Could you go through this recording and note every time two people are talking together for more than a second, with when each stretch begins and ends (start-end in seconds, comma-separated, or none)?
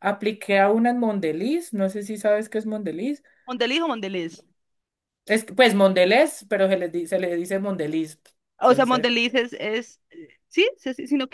none